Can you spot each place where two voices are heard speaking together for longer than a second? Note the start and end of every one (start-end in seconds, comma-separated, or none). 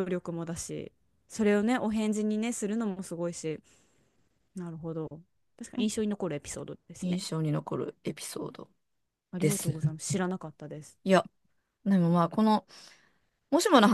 none